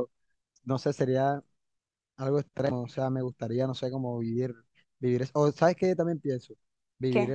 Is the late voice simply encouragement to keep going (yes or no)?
yes